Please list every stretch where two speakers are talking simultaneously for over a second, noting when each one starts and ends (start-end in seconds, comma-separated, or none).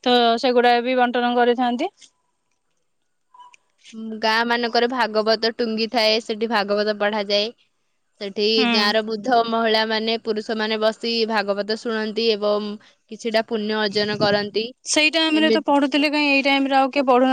none